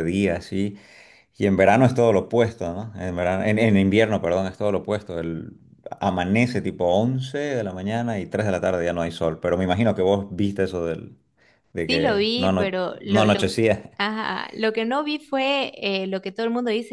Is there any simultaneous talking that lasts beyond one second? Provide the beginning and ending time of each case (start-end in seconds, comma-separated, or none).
11.9-13.5